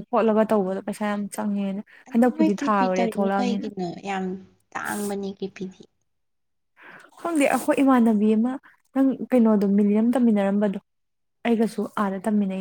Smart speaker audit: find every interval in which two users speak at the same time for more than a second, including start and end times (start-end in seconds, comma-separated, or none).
2.4-3.7